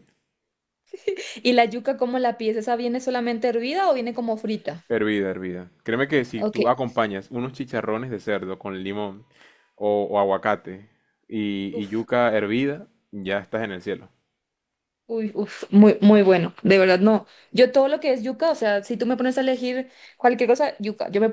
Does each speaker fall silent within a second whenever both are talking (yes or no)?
yes